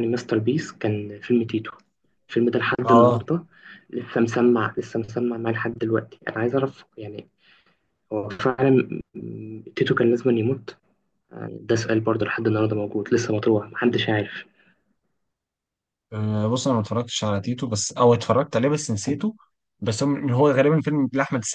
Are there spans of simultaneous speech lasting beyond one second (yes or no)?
no